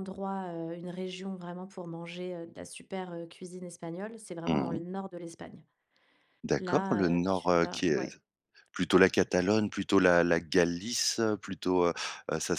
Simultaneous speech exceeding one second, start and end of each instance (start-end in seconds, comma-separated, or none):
6.6-8.1